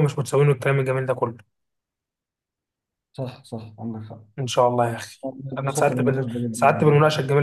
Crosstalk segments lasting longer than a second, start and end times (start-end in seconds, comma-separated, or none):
5.6-6.9